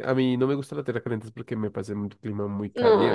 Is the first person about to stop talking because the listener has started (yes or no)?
yes